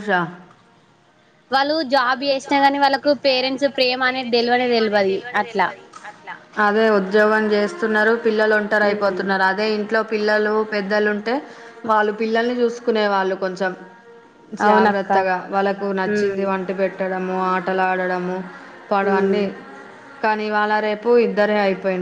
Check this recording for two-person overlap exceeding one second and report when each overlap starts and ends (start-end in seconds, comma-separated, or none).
none